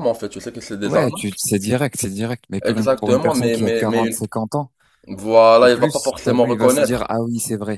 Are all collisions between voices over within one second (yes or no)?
no